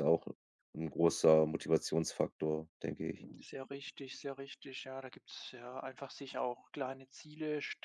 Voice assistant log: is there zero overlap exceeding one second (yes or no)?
yes